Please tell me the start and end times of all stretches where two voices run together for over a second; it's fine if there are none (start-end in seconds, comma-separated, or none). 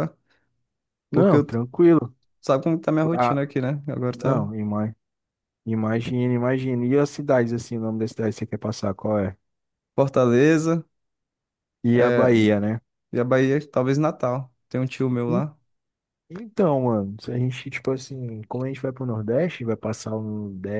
none